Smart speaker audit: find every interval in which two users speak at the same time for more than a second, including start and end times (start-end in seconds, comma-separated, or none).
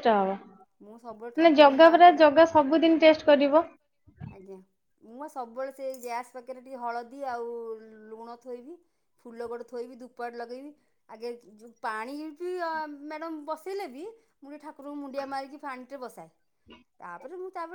0.8-2.7